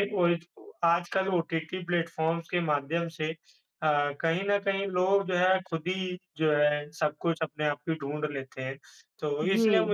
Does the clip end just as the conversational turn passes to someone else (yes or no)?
no